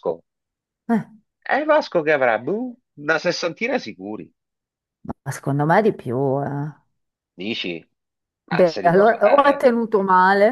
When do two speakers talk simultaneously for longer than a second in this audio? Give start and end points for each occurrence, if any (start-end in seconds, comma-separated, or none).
8.5-9.7